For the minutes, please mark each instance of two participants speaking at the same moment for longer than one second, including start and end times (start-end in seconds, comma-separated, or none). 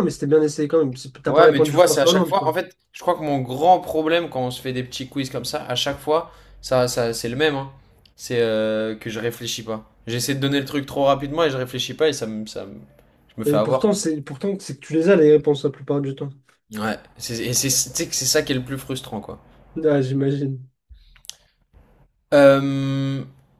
1.3-2.6